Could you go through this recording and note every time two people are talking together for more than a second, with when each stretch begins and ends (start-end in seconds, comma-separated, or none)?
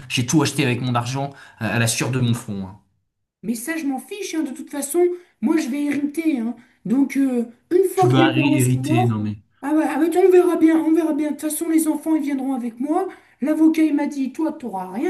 8.0-9.4